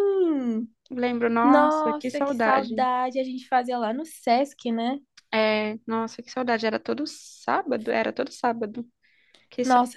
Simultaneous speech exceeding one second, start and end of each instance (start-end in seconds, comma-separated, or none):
1.4-2.9